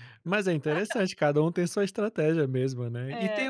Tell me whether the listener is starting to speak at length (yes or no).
no